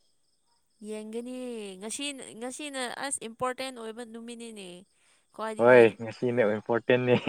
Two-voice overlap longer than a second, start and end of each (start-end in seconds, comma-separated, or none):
none